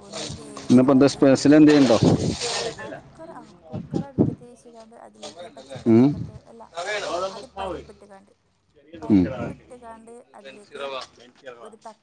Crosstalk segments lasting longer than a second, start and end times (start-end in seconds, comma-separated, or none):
none